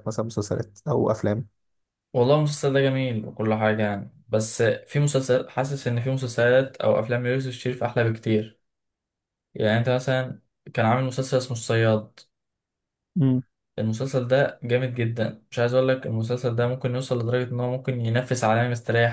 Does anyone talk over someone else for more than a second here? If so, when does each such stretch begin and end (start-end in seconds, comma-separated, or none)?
none